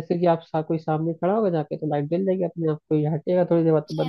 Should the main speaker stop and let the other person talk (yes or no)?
yes